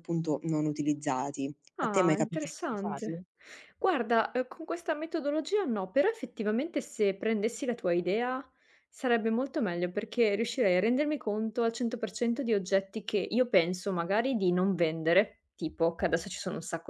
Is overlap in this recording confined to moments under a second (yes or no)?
no